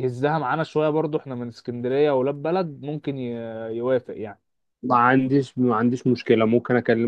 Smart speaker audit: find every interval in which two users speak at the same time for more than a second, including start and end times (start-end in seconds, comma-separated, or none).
none